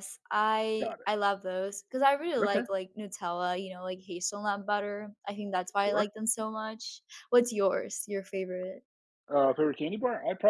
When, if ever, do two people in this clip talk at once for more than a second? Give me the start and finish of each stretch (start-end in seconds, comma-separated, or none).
none